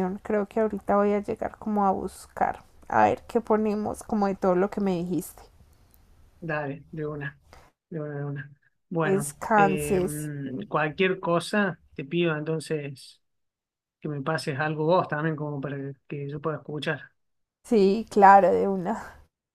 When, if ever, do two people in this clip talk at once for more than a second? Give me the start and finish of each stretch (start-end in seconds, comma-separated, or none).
9.0-10.3